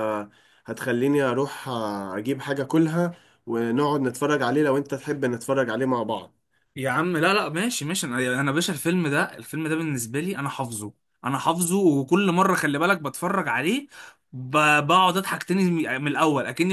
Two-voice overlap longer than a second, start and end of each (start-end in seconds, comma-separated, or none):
none